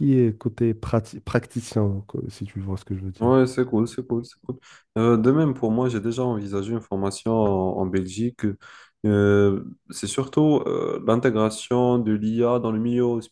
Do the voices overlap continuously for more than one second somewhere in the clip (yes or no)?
no